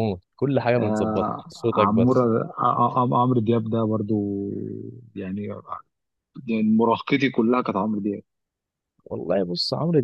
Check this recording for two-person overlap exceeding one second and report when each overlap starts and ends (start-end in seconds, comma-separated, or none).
0.8-2.3